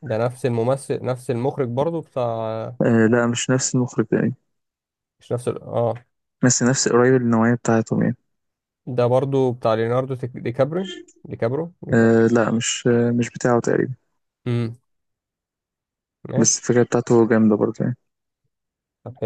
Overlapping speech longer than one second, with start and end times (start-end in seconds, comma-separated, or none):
none